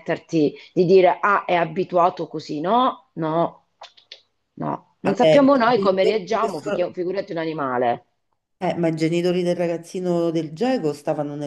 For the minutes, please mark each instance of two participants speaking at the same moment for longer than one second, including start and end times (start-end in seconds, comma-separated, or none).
5.0-6.9